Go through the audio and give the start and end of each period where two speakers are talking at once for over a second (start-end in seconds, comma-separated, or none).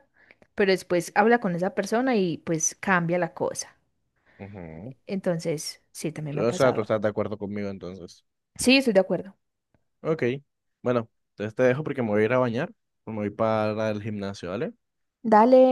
none